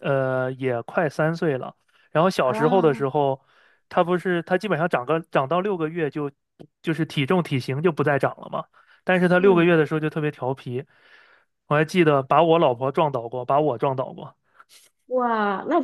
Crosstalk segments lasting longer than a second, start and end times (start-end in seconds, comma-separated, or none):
none